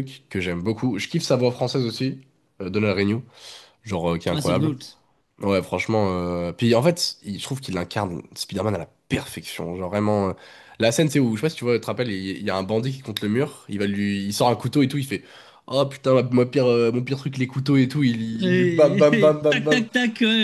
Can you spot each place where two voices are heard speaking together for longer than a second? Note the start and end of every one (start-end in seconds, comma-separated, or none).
18.4-19.9